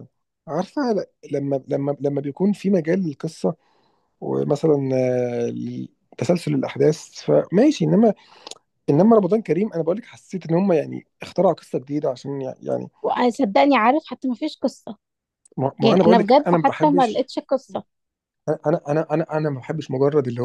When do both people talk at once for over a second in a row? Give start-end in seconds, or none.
15.8-17.3